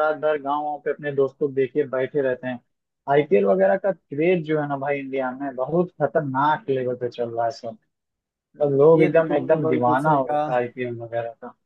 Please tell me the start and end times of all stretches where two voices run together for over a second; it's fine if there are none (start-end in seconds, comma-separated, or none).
9.0-10.5